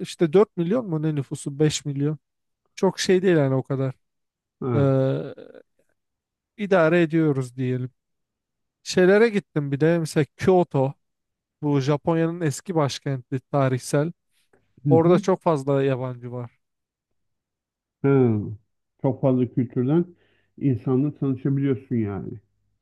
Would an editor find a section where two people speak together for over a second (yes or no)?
no